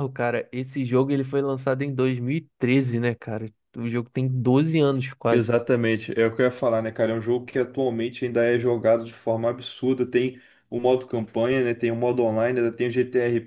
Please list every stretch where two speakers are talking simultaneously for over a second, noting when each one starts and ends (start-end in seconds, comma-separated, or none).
none